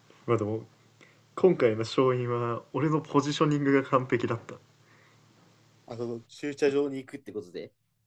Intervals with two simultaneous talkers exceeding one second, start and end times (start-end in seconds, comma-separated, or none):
none